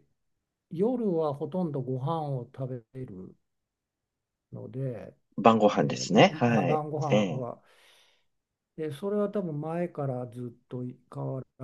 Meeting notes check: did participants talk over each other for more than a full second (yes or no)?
yes